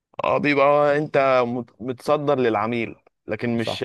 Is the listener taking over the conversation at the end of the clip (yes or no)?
no